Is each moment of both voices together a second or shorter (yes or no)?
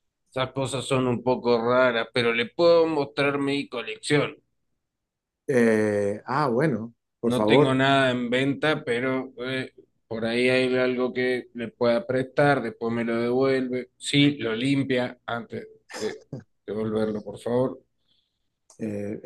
yes